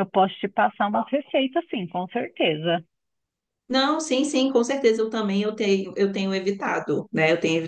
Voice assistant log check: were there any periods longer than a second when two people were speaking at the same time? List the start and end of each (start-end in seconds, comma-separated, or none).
none